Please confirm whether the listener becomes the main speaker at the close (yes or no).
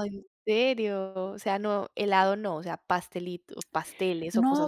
yes